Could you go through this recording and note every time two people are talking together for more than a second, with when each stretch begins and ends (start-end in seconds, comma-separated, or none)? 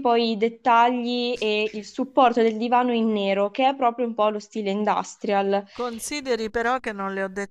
none